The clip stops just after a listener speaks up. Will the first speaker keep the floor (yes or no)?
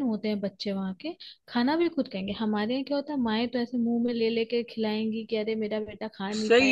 no